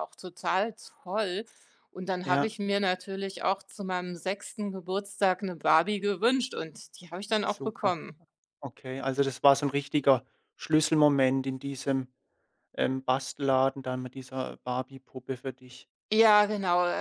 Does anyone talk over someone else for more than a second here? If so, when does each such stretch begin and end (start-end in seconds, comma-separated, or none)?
none